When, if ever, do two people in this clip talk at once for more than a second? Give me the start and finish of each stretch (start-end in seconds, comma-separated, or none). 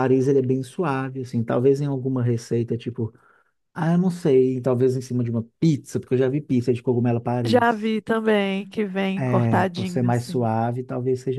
9.2-10.5